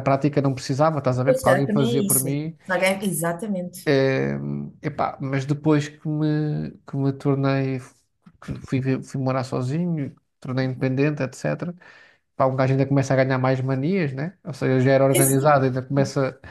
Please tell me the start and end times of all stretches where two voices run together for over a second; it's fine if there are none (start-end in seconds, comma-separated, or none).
1.2-2.6